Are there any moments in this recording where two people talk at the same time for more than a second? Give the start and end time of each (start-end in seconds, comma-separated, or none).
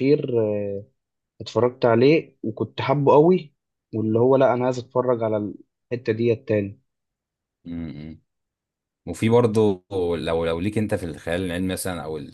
none